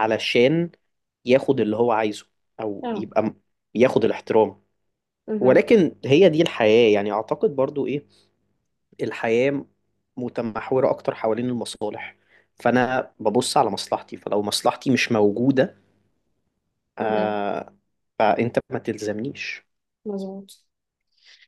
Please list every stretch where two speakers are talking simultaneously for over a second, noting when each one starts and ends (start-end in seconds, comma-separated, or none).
none